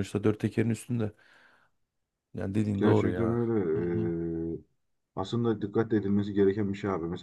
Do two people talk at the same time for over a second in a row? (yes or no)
yes